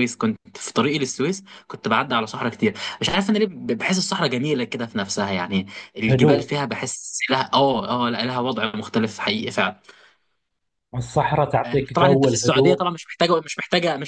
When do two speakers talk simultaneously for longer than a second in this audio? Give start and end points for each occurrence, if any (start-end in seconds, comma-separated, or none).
11.7-12.8